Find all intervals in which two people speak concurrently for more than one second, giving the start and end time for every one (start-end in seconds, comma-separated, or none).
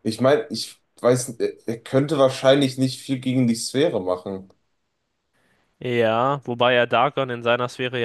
none